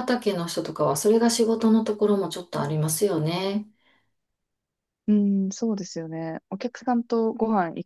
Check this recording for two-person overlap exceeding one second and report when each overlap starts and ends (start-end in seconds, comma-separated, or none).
none